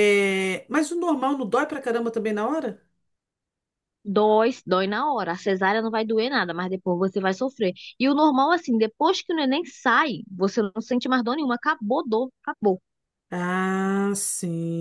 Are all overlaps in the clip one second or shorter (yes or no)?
yes